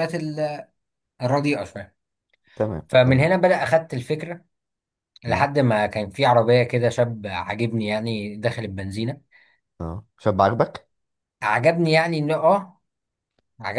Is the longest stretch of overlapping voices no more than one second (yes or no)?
yes